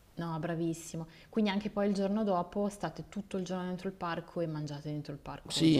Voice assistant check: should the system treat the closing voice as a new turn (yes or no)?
yes